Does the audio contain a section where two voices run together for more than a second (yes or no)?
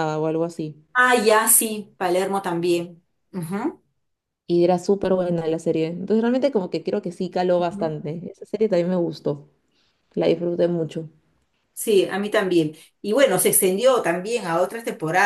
no